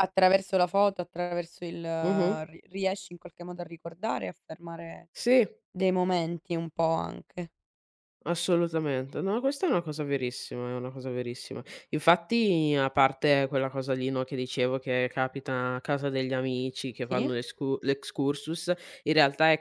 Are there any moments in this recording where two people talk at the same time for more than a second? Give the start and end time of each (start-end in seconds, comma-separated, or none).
none